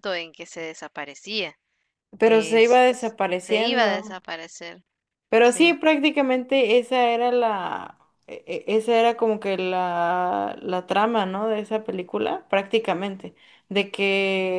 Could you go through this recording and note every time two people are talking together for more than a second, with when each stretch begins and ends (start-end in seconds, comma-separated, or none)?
2.2-4.2